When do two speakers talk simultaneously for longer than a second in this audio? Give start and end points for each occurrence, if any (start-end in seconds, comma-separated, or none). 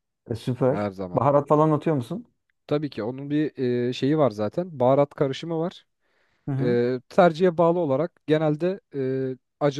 none